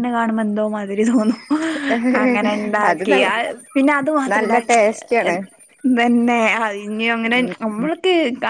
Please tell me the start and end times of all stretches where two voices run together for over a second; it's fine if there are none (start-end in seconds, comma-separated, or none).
none